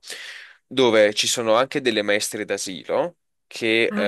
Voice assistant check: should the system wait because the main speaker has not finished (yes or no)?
yes